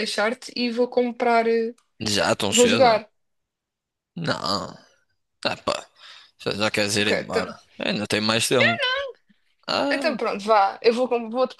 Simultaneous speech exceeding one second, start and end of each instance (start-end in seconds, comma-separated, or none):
none